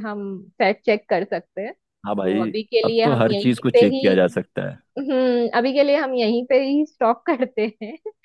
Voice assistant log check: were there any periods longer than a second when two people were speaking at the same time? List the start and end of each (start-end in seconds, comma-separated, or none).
2.0-4.1